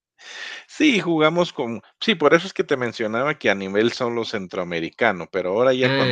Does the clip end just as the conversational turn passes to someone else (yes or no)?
no